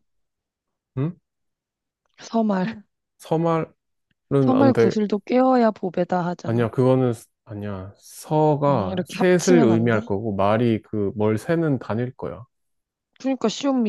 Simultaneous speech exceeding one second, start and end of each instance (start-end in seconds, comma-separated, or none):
8.7-10.0